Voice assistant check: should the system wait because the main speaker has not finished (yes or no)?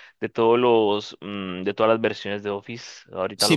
no